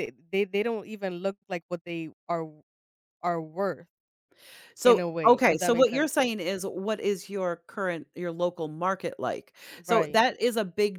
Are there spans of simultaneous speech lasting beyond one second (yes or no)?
yes